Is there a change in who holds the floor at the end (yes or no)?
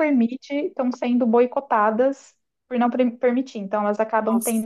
no